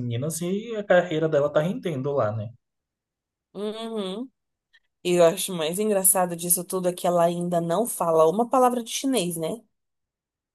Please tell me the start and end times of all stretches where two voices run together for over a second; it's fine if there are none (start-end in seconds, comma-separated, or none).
none